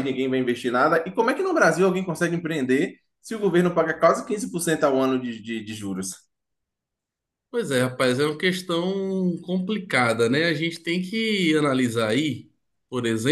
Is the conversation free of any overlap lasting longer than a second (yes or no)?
yes